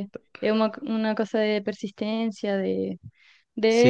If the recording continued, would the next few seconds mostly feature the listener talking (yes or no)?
no